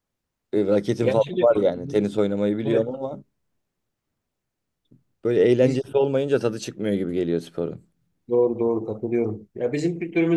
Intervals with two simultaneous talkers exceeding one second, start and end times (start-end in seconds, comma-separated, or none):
1.0-2.2